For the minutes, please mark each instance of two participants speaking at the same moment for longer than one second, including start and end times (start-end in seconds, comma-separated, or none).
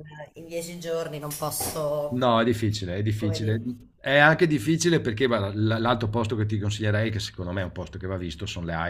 none